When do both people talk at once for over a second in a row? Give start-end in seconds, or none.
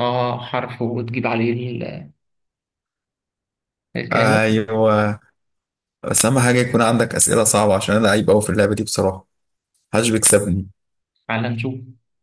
none